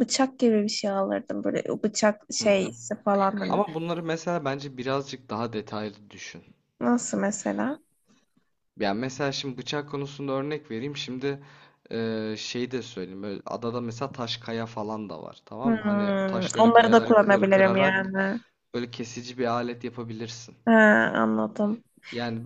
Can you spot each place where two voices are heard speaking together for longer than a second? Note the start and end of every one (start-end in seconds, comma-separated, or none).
15.6-18.1